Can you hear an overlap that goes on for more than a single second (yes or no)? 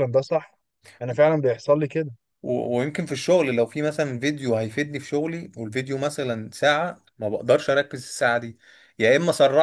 no